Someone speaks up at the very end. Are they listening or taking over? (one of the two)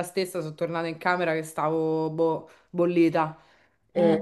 listening